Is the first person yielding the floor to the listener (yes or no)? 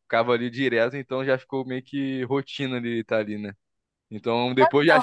no